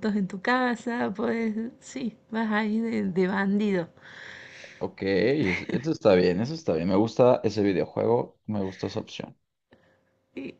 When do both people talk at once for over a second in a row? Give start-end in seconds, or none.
none